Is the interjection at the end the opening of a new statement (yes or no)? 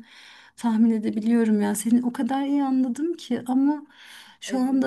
no